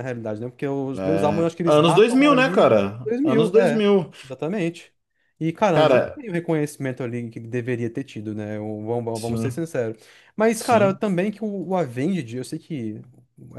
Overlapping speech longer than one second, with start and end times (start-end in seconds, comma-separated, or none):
1.0-3.8